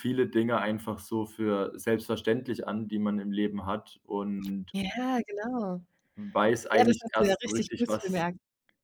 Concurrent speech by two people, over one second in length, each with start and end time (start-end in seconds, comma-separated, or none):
6.7-8.2